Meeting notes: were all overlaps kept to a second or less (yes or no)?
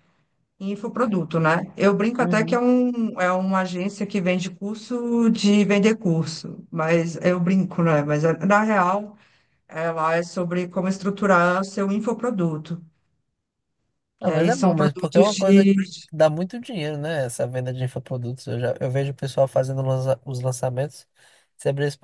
no